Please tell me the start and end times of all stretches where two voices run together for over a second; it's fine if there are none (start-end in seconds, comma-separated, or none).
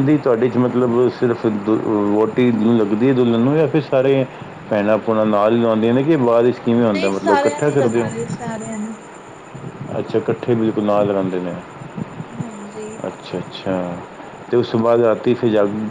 6.8-8.1